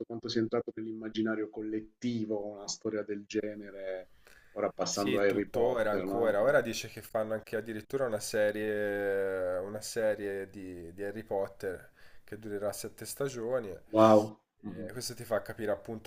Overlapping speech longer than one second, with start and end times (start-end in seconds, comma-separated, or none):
4.8-6.4